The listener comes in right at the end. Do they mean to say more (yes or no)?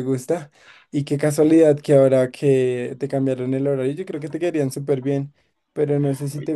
no